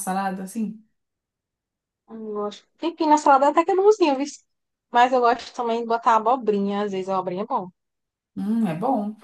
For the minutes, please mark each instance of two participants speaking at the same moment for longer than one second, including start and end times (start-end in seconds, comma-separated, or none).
none